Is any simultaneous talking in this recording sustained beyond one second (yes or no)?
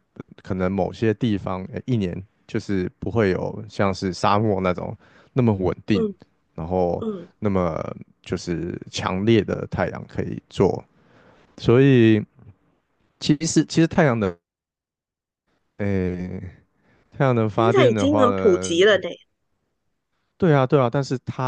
yes